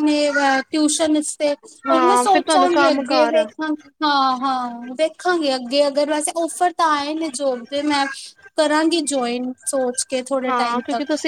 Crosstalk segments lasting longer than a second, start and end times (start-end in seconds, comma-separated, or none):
1.9-3.5